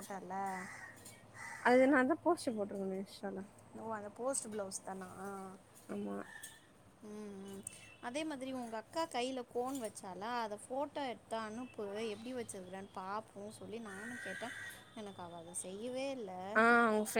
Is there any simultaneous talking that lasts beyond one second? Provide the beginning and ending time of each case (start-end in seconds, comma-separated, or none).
none